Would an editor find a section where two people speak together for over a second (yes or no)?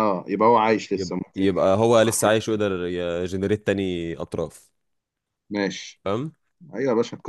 yes